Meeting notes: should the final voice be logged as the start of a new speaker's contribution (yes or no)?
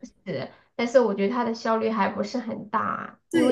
yes